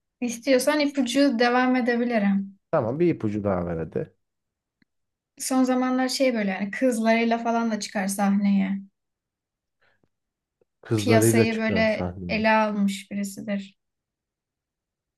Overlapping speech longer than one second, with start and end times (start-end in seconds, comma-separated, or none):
10.9-12.4